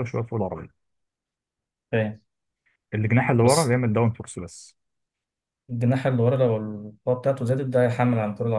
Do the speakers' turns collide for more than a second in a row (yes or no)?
no